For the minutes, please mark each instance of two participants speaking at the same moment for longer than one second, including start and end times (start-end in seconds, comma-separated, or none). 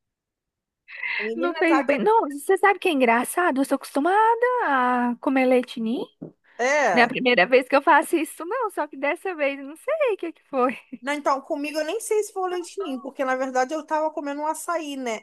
none